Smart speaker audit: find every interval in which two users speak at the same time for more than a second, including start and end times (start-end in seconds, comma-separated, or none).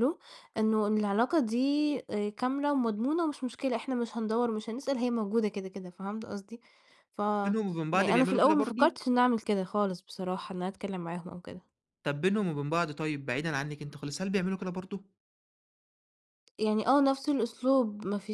7.4-9.0